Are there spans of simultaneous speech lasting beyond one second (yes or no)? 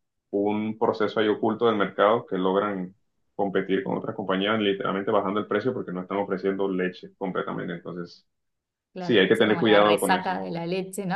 yes